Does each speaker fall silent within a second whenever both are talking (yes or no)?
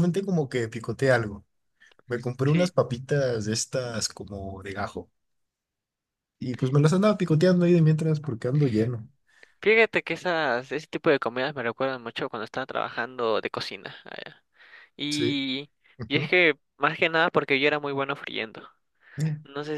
yes